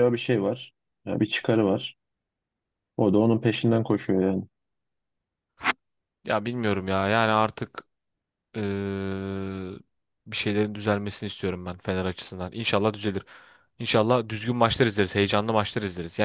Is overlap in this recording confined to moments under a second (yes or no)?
yes